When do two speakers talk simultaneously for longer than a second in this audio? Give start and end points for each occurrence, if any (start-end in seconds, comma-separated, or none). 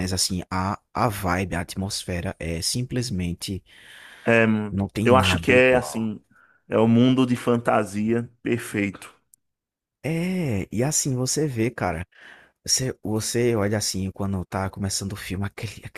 4.7-6.2